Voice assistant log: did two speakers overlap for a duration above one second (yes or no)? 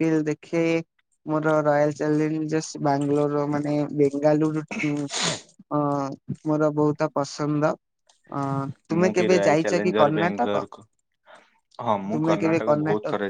yes